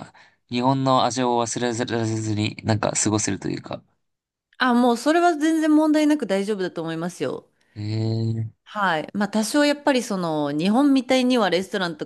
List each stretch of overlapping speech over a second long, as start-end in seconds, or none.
none